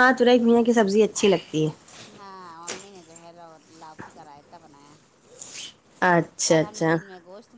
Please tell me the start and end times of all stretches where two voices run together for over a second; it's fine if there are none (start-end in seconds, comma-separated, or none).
none